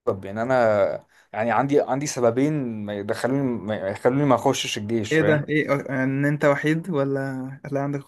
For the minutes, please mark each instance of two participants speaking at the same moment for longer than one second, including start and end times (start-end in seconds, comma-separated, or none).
none